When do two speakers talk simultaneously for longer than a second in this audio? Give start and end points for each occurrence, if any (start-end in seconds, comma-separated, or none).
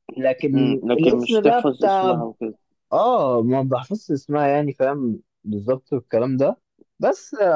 0.5-2.2